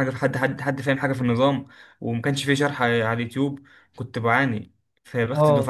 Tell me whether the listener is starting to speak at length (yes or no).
no